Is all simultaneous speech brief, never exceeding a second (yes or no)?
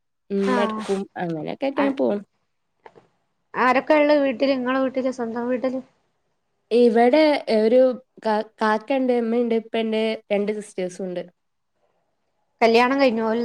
yes